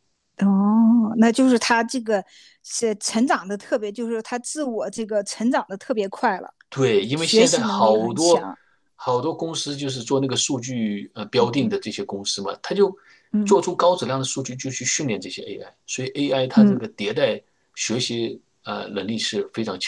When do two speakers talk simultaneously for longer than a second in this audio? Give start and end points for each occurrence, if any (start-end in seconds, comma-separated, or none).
7.1-8.4